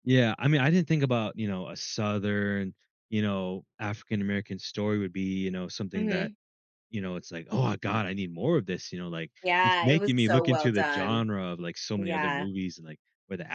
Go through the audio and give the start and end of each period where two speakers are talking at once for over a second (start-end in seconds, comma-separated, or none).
9.4-11.3